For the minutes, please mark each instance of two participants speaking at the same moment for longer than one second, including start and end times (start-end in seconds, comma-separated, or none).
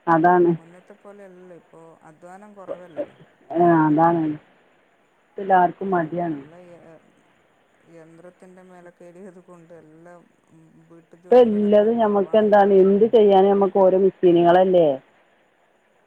11.2-12.9